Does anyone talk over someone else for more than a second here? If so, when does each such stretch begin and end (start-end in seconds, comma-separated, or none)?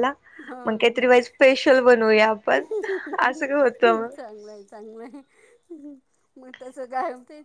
none